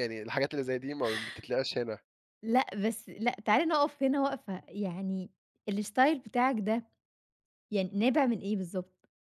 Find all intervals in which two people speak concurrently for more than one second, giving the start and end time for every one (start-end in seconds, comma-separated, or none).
none